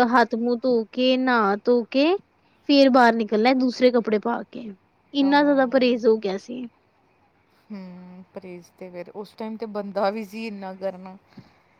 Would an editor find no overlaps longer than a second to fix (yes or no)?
yes